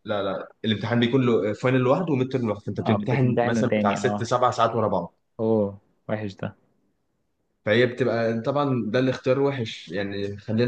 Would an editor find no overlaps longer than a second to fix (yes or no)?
no